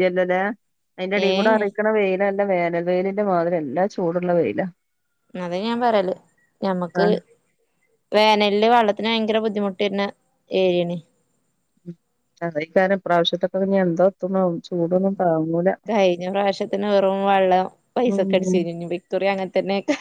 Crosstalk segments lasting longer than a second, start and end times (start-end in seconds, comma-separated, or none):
none